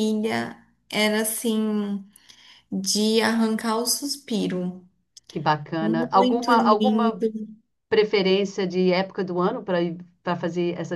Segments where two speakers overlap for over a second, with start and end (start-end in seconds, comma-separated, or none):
5.8-7.2